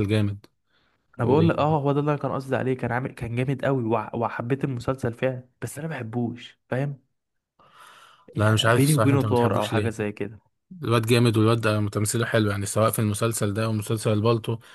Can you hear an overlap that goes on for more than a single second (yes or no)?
yes